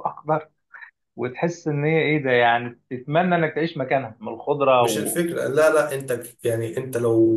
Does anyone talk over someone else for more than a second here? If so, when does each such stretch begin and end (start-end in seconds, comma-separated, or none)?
none